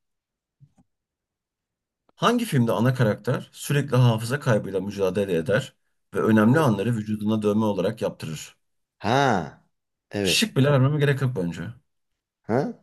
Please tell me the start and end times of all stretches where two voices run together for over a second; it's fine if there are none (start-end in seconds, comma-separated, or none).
none